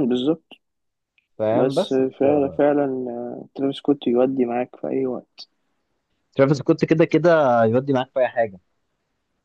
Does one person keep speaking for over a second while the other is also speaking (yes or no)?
no